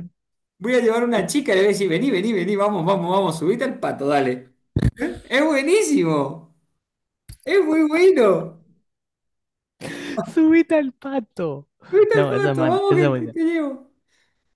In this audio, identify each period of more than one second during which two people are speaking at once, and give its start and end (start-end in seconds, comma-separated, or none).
12.1-13.4